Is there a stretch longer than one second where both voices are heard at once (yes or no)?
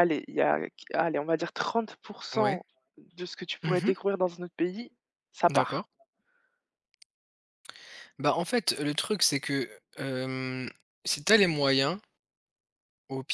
no